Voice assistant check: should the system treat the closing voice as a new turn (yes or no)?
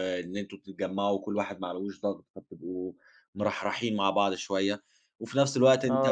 no